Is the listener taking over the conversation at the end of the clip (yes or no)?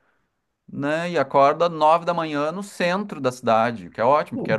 no